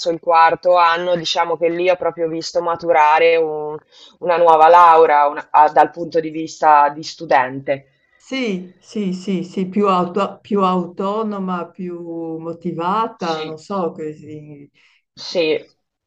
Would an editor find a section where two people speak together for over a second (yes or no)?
no